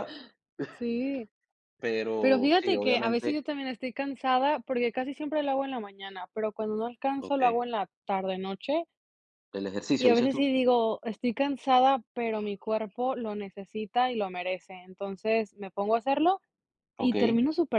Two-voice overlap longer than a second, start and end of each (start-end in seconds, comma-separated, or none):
2.2-3.5